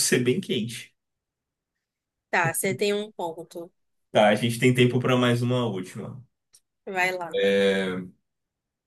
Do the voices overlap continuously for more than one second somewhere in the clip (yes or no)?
no